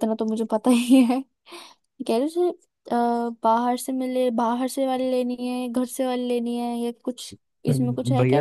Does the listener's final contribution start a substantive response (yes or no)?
yes